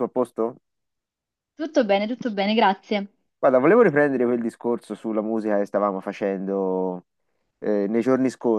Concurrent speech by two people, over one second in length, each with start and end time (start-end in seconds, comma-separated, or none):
none